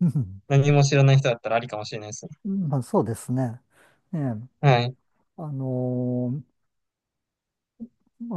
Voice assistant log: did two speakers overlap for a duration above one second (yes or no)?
no